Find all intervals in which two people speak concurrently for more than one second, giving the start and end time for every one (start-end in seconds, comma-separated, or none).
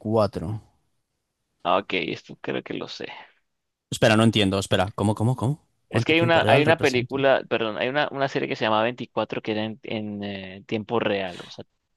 5.9-7.2